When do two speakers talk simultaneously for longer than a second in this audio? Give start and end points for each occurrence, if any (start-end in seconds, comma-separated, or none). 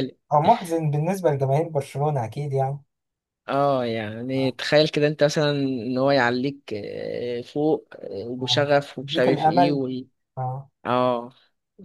8.4-9.8